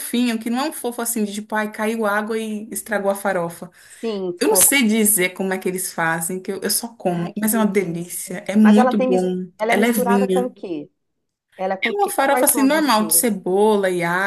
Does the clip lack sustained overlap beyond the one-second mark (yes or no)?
no